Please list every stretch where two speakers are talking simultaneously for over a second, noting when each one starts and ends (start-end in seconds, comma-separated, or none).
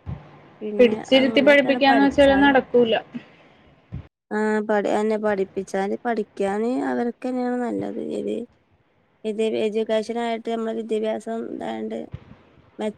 0.8-2.5